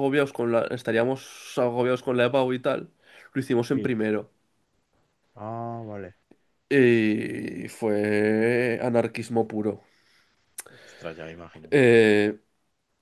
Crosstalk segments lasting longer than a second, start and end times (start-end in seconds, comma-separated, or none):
none